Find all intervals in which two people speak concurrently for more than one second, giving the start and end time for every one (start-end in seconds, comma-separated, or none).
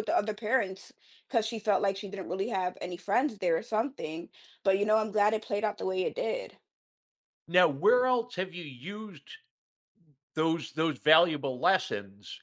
none